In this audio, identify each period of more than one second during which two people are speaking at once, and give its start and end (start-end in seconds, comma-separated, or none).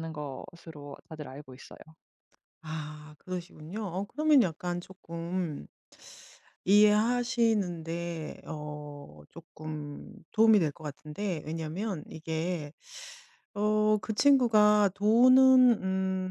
none